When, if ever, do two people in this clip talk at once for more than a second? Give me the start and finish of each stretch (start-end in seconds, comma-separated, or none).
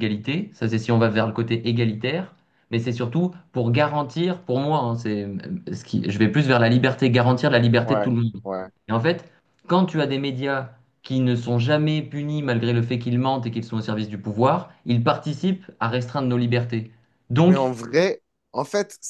none